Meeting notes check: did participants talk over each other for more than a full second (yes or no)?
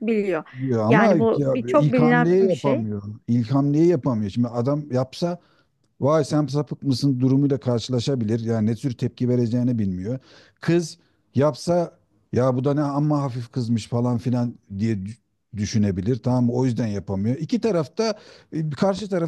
yes